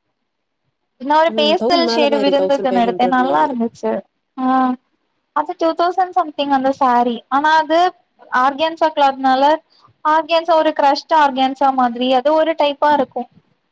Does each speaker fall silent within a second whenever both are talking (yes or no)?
no